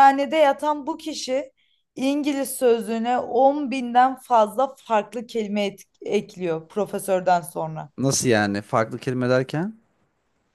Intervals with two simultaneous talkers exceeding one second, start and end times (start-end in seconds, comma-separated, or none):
none